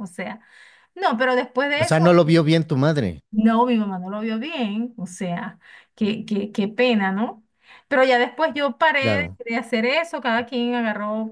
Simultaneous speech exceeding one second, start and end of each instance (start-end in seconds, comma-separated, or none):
none